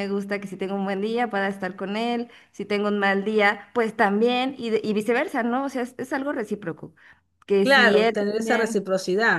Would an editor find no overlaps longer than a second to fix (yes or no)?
no